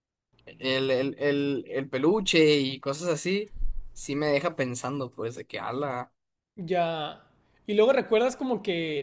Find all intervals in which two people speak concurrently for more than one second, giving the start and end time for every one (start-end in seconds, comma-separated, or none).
none